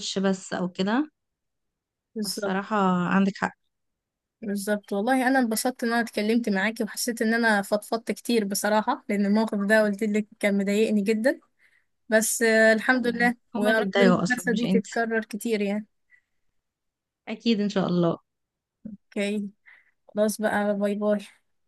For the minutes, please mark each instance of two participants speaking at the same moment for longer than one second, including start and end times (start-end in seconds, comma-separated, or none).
12.9-14.8